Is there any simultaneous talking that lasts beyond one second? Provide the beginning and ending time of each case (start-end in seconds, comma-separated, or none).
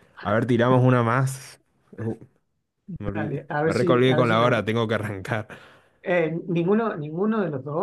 3.0-4.7